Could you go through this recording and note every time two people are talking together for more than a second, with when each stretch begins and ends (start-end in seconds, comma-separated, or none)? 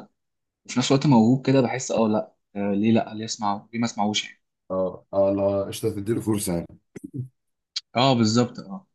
none